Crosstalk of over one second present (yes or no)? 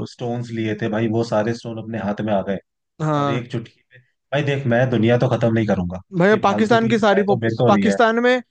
yes